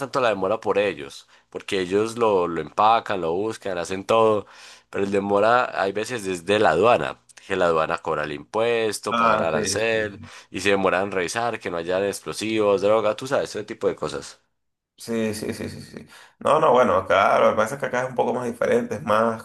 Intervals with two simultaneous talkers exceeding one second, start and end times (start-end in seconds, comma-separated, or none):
9.1-10.3